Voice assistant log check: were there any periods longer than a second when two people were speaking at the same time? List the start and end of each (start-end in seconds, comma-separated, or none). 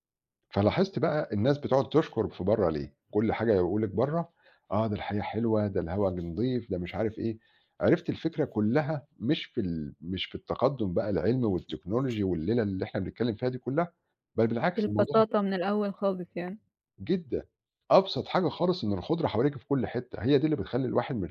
none